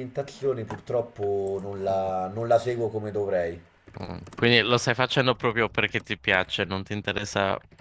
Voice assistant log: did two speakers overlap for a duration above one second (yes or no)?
no